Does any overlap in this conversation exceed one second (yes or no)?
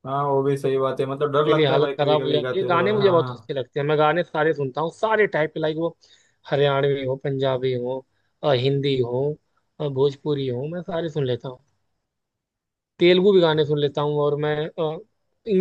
yes